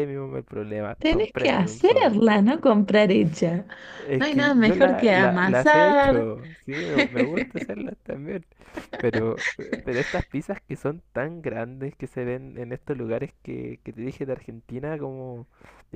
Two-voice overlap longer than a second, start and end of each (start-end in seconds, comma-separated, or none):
1.0-2.2, 4.2-6.3